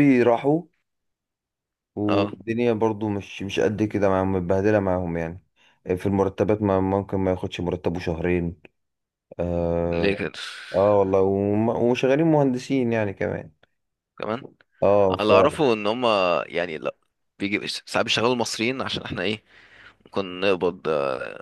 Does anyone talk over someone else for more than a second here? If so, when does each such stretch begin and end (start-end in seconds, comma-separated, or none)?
none